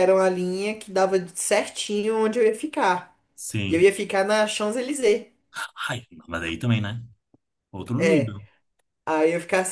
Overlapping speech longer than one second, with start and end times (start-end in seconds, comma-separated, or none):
none